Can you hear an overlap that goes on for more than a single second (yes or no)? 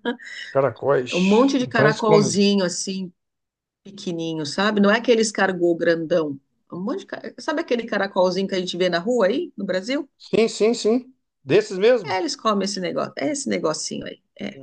yes